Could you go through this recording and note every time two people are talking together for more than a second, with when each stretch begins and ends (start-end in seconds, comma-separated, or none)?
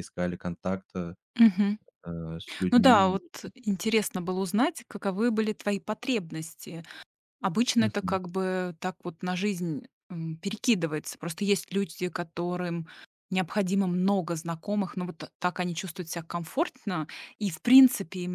none